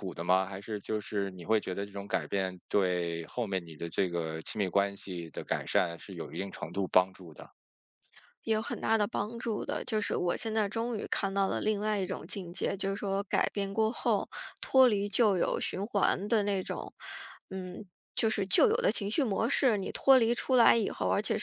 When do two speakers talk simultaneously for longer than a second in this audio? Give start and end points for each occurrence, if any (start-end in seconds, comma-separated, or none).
none